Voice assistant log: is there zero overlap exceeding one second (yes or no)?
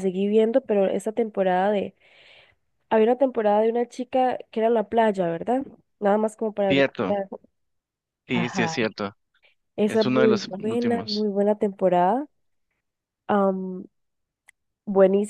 no